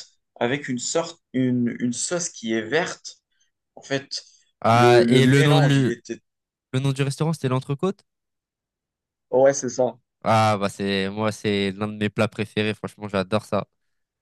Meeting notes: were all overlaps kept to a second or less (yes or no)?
no